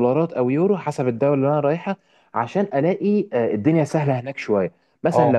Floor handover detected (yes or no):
no